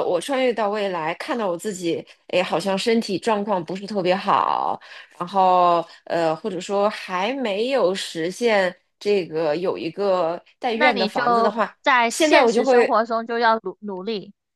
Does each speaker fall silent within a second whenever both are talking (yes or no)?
no